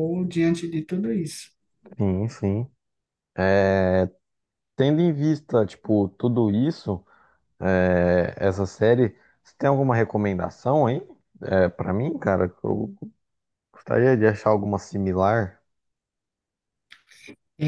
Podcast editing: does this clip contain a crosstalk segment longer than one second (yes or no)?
no